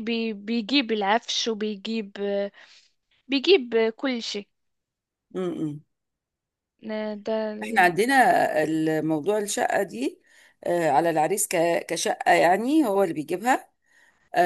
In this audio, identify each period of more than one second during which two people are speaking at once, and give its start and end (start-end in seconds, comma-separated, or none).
none